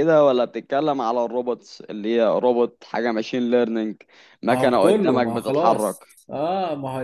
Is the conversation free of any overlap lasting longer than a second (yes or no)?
no